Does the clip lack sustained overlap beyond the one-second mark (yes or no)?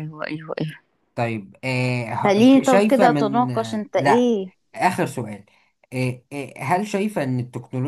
no